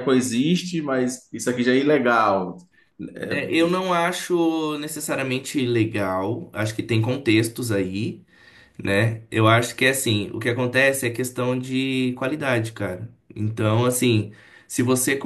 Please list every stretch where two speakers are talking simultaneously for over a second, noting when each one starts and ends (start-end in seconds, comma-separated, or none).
none